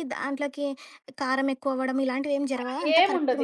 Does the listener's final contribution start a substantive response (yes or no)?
yes